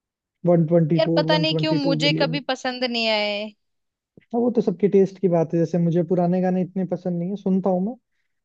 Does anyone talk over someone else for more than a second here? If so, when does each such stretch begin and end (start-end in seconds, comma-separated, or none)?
0.9-2.4